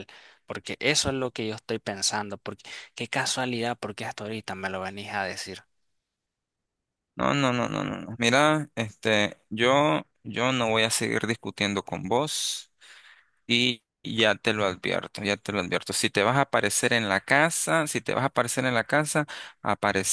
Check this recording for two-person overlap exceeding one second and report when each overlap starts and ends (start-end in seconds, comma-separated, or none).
none